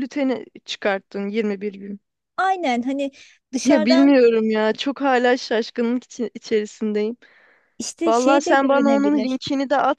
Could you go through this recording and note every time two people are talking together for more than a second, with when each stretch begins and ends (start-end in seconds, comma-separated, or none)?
8.1-9.4